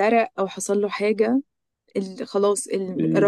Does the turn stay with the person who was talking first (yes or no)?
yes